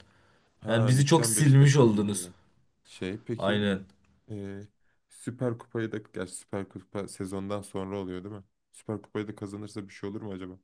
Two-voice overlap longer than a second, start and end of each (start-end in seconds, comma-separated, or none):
0.7-2.3